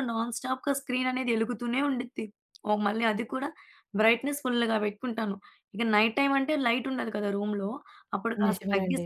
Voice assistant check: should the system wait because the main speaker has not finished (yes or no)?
yes